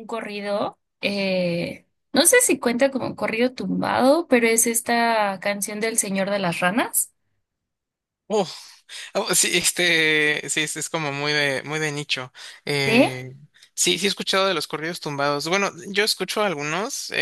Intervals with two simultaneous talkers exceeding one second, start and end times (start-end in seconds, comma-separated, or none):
none